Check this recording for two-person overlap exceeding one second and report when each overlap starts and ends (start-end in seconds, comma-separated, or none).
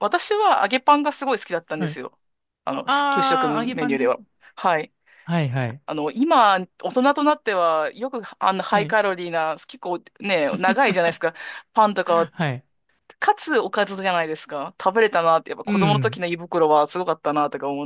2.9-4.2